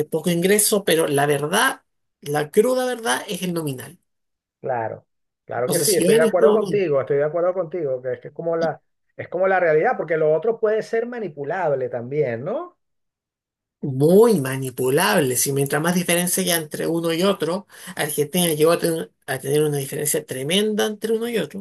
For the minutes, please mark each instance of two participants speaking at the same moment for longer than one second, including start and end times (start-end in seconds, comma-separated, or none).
5.6-6.8